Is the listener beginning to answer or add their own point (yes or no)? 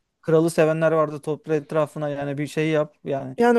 yes